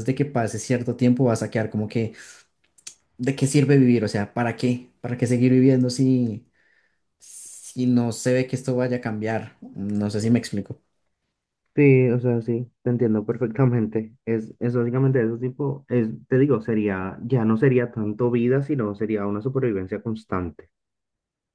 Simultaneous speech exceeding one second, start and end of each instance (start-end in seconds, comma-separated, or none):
none